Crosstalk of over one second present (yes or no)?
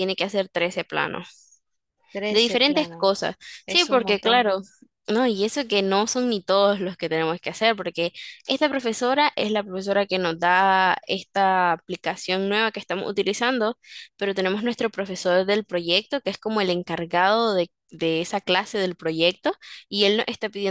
yes